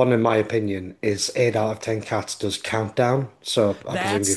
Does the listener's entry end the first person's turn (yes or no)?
yes